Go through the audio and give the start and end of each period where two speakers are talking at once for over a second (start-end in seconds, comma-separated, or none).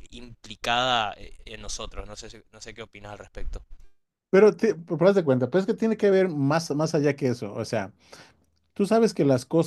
none